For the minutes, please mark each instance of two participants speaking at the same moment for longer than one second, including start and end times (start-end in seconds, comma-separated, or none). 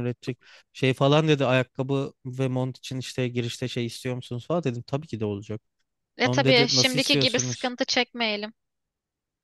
6.2-7.7